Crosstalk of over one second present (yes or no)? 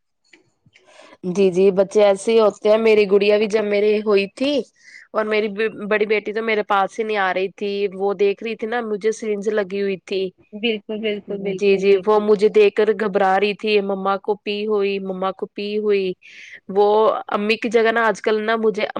yes